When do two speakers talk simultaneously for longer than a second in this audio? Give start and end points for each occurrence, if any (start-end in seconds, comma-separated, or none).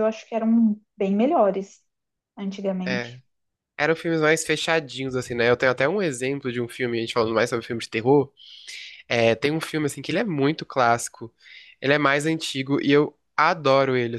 none